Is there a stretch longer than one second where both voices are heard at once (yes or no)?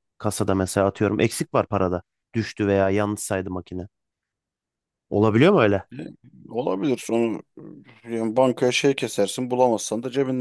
no